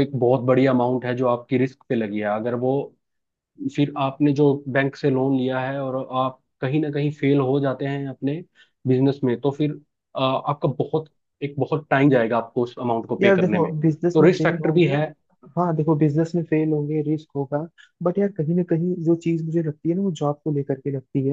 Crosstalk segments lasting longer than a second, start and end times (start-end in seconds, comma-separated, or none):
13.2-14.8